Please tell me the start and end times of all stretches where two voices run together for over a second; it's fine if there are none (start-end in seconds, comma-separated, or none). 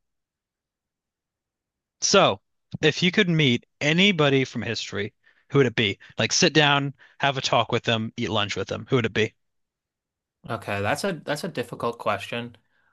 none